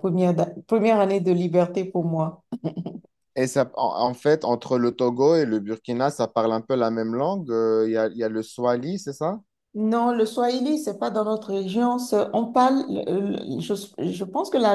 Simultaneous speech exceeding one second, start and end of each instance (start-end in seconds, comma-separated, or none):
none